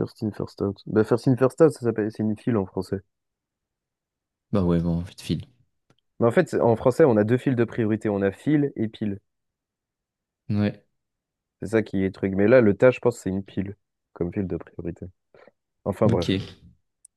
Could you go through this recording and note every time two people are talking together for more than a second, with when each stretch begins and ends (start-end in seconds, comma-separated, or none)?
none